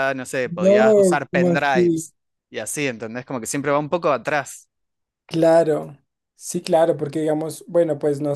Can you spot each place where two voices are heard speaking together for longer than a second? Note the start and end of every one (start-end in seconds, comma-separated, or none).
0.6-2.0